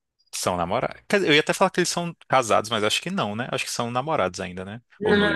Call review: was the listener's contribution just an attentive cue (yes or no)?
no